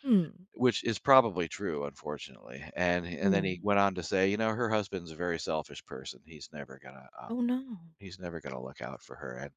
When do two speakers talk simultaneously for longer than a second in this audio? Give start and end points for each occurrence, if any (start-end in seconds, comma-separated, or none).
none